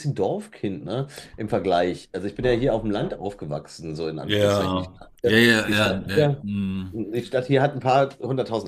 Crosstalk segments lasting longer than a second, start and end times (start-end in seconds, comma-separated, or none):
4.2-6.4